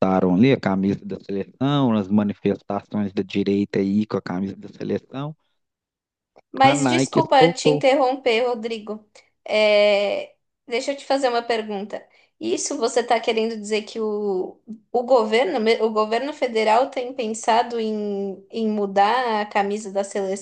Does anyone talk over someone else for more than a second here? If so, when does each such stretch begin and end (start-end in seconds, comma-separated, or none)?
6.6-7.8